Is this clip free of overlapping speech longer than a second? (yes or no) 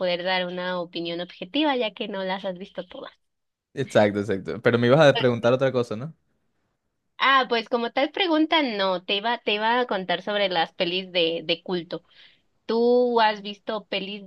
yes